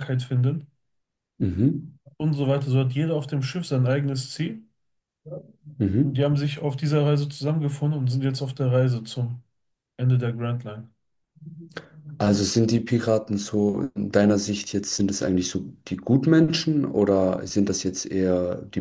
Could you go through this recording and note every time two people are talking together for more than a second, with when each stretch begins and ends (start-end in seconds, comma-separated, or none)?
none